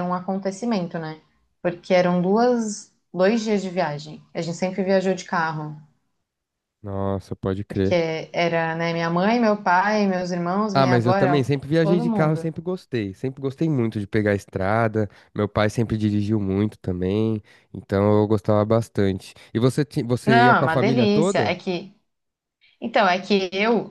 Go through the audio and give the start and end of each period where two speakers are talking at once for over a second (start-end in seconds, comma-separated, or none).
10.7-12.5, 20.3-21.6